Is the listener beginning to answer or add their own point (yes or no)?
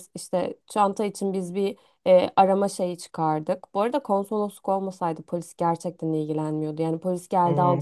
yes